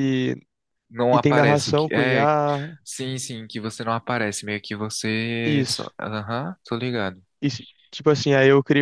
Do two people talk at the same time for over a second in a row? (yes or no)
yes